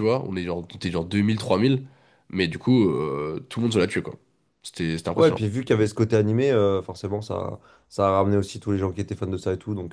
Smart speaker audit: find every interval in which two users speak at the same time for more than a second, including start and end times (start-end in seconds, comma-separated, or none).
none